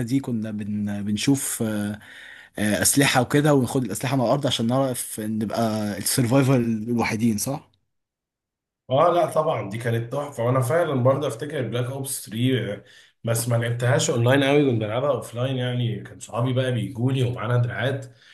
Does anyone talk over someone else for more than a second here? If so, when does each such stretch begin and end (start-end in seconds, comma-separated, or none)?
none